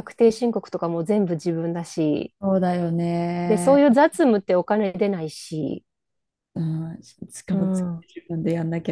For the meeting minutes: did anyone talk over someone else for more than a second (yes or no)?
no